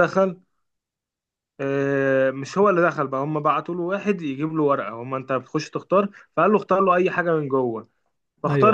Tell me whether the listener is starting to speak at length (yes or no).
no